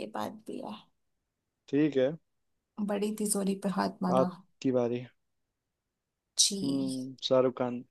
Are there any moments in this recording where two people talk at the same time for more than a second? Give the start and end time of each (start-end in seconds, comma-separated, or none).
none